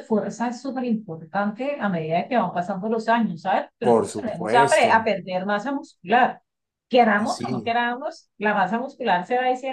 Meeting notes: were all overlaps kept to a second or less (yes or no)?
no